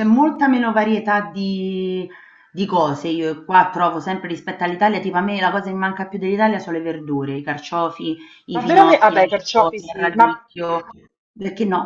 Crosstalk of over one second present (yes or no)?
yes